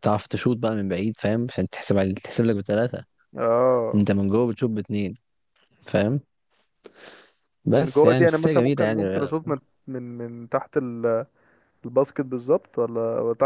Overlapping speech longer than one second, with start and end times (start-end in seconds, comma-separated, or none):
7.7-9.0